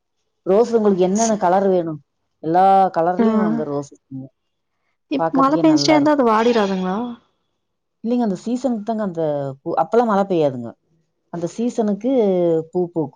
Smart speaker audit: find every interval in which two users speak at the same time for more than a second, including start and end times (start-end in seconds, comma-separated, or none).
none